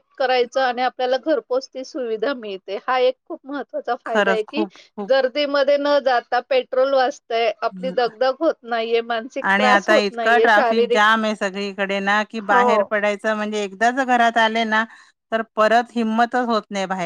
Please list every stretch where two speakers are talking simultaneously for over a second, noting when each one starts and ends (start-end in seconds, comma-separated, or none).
9.5-11.0